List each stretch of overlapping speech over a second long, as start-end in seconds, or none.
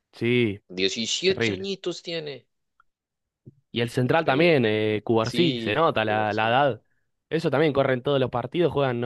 5.2-6.6